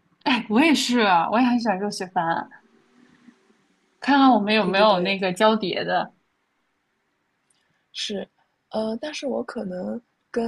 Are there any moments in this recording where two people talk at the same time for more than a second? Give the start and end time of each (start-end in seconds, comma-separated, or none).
none